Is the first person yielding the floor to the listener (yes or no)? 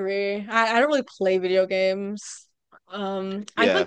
no